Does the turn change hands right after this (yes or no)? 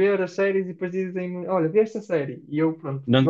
yes